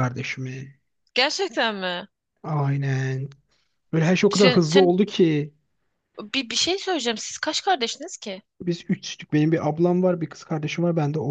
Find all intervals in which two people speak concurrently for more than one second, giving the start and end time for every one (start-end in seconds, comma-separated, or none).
none